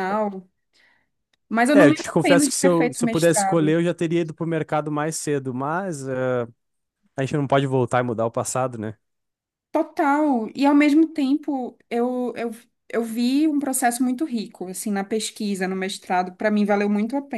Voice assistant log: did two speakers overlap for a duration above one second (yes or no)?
yes